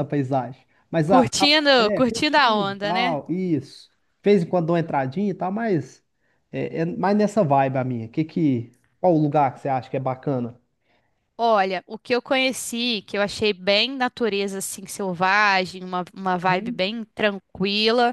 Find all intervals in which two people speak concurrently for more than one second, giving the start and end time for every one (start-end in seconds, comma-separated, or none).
1.1-3.2